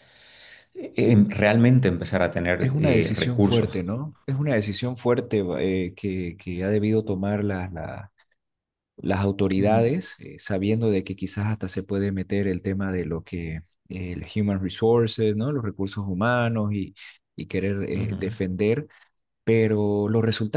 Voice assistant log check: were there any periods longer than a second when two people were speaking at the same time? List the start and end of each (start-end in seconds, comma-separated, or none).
2.6-3.8